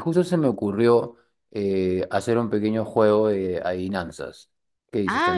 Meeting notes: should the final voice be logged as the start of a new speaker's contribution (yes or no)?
yes